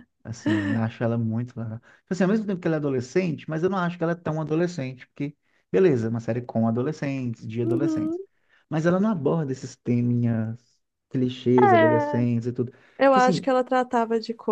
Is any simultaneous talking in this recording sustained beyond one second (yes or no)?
no